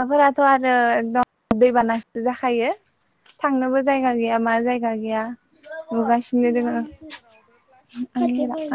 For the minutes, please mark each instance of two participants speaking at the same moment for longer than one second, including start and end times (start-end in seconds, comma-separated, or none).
none